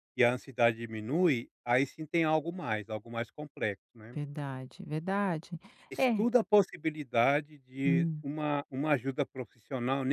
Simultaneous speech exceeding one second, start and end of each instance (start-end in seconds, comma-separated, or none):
none